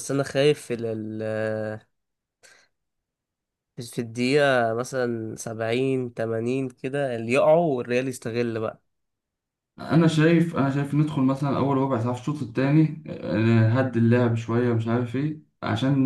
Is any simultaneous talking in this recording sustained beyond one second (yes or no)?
no